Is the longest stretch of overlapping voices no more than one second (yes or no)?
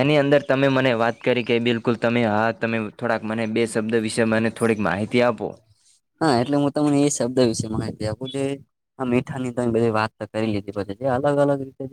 yes